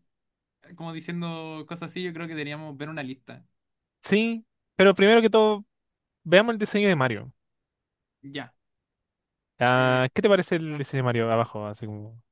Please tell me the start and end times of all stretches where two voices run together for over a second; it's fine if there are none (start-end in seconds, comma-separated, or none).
none